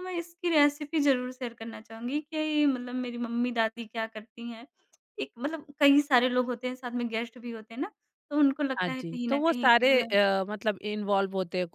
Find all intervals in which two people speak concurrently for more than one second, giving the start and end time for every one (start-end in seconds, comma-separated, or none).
8.8-10.2